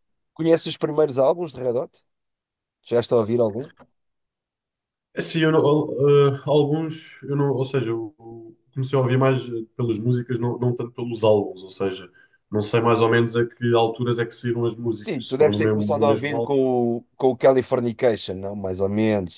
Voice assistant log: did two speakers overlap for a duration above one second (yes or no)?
yes